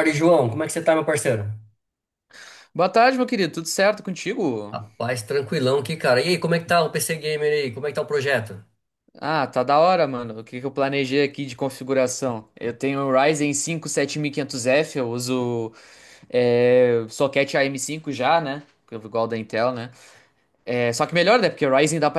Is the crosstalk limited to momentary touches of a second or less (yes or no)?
yes